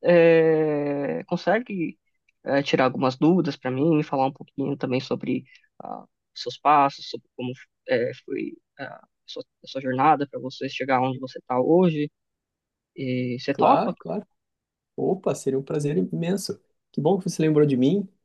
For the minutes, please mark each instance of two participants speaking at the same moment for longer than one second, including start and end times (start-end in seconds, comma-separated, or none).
none